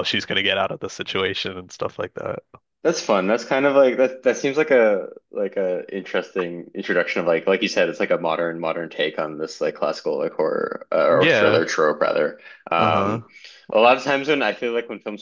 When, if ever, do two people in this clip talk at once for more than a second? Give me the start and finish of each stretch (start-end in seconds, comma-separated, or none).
none